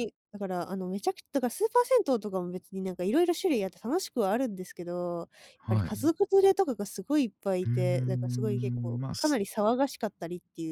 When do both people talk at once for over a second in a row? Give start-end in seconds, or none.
7.6-9.4